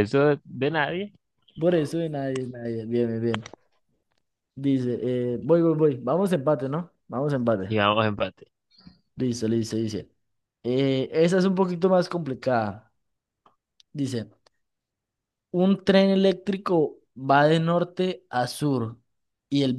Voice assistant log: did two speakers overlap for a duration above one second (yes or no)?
no